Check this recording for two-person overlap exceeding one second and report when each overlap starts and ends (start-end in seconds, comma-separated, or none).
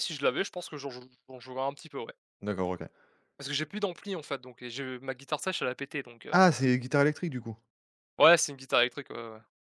none